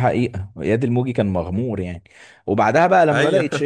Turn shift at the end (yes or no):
no